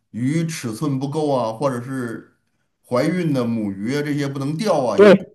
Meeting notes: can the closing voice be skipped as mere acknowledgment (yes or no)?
no